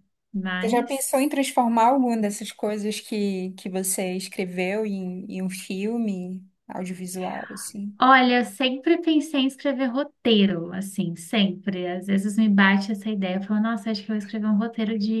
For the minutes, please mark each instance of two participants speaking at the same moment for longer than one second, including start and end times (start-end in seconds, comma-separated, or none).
none